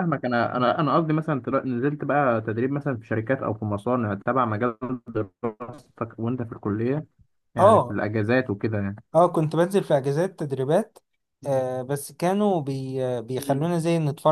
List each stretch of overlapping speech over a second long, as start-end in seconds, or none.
none